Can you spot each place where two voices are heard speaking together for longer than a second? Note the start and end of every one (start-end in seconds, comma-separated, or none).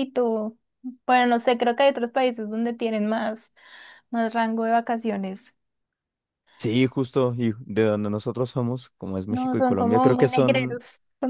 9.3-10.8